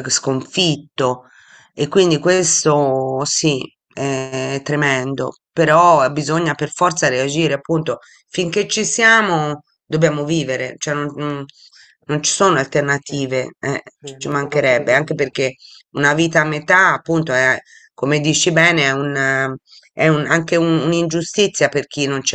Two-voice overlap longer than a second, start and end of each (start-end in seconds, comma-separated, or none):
14.2-15.4